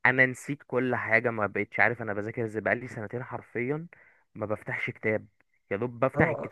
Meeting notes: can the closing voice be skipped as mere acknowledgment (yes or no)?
yes